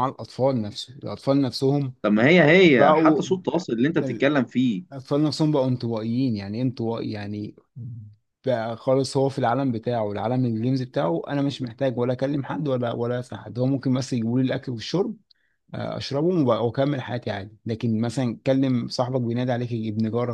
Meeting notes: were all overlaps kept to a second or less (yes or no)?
yes